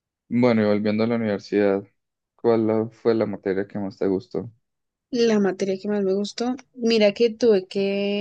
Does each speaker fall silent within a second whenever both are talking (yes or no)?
yes